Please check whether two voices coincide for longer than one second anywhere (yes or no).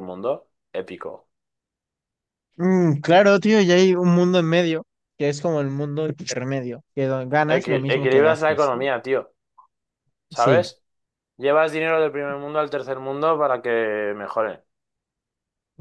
yes